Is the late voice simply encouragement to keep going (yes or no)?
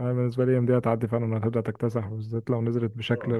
yes